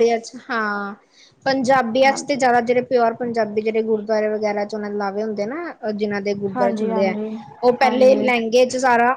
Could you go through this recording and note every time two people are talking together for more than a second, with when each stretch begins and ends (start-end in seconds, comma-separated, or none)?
none